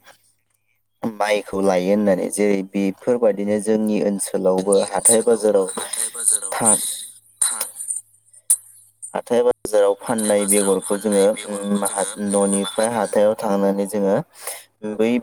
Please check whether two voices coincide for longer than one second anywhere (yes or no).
yes